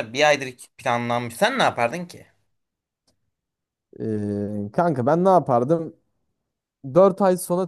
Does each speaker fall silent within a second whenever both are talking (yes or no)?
yes